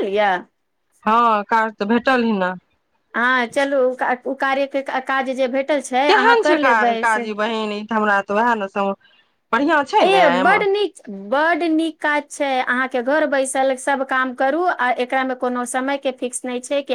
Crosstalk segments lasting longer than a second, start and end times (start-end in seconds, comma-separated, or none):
none